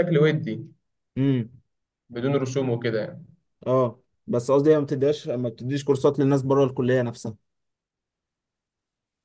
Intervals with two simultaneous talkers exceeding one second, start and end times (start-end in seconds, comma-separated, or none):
none